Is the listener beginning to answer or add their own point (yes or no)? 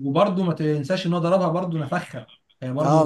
yes